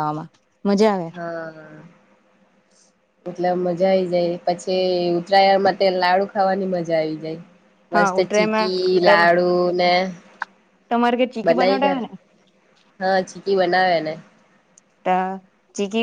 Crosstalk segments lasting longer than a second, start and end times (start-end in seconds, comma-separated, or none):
7.9-9.3